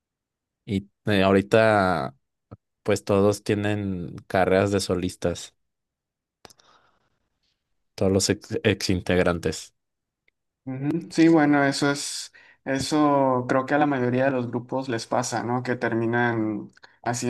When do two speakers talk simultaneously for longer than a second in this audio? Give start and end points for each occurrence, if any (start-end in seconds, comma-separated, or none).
none